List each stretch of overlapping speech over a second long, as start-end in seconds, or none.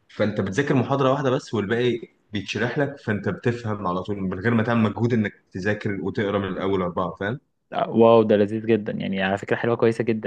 none